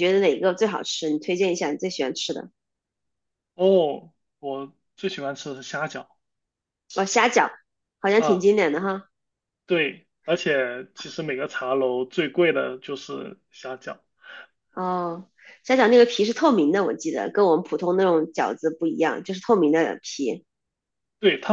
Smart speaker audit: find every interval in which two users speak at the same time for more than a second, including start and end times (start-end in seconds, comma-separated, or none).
none